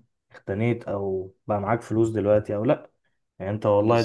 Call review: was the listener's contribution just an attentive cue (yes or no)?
yes